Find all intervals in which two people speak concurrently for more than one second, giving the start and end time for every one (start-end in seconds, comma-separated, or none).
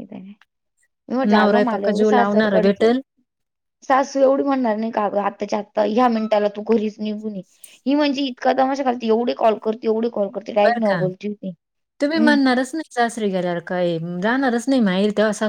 1.2-2.9